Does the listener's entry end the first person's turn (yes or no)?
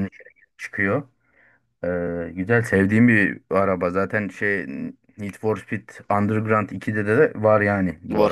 no